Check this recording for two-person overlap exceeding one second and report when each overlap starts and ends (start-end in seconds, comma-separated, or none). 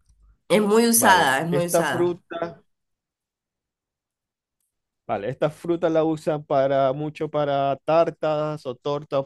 0.9-2.2